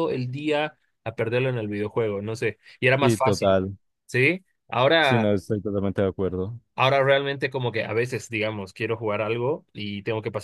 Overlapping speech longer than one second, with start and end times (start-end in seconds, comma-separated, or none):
none